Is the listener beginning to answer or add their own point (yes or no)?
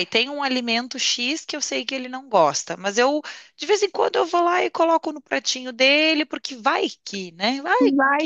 yes